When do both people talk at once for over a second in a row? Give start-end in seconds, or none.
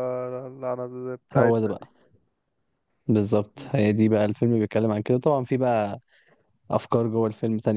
none